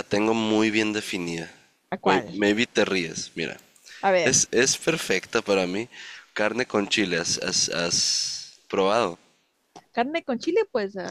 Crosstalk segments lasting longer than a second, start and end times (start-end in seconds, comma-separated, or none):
none